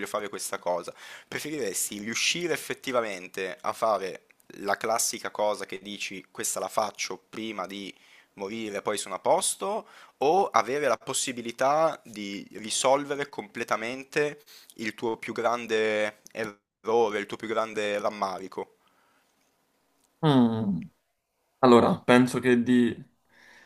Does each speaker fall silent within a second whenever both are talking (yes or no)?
yes